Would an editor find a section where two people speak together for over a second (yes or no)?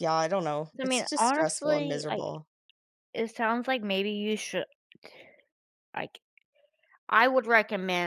yes